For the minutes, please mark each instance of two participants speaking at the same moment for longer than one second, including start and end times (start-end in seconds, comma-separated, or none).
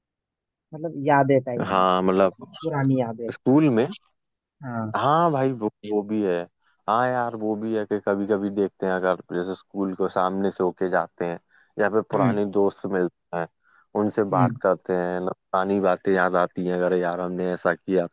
none